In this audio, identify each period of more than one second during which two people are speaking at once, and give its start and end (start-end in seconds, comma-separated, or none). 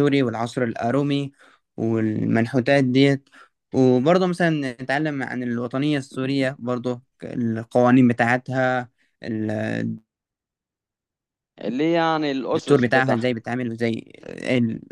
none